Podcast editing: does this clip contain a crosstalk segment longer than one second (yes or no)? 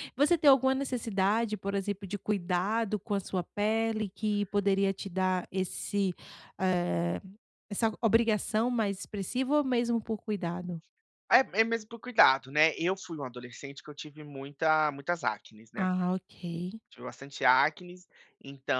no